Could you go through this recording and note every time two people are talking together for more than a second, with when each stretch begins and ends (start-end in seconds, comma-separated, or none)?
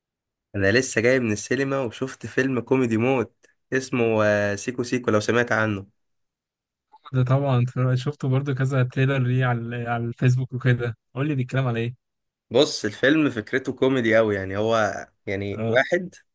none